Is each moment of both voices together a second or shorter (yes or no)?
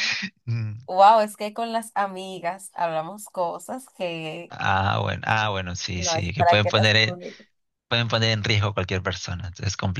no